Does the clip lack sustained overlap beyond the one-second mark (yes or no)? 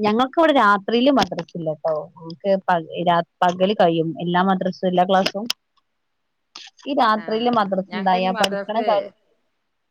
no